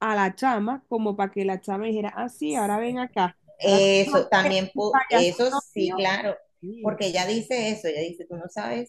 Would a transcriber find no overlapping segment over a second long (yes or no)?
no